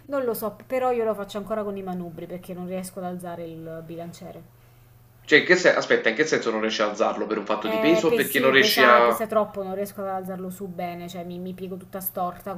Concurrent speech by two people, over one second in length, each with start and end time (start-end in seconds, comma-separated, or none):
7.7-9.2